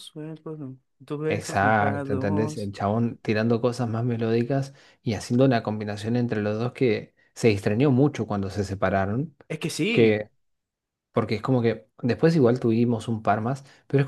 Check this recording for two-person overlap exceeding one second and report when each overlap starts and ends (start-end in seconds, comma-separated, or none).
1.3-2.7